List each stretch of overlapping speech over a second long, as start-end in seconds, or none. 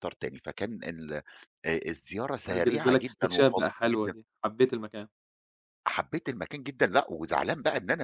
2.5-4.1